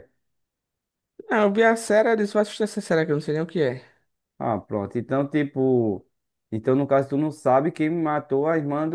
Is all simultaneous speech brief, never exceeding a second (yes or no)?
yes